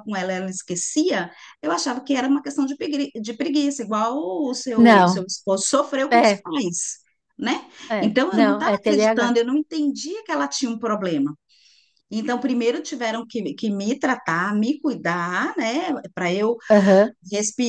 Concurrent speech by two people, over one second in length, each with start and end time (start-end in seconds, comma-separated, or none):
7.9-9.4